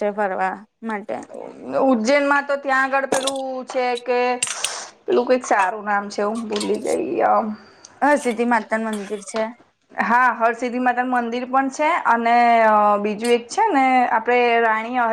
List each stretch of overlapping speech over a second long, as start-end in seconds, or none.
none